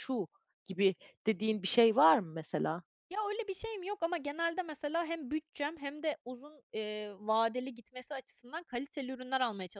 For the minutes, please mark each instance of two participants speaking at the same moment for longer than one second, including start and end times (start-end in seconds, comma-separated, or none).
none